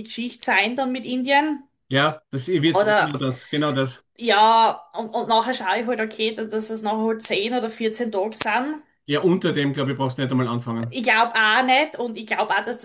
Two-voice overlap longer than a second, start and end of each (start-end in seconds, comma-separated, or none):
none